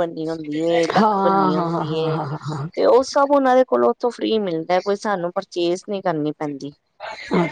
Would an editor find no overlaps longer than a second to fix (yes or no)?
no